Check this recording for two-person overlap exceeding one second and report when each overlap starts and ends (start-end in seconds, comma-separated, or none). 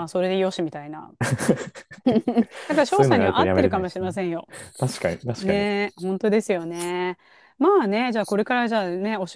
2.9-4.1